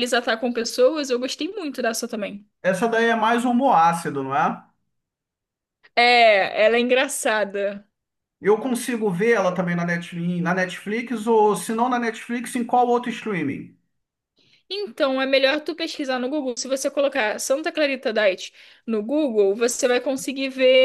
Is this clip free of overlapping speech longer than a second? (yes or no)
yes